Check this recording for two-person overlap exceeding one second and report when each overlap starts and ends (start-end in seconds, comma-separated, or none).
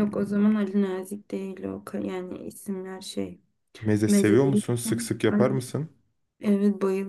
4.1-5.6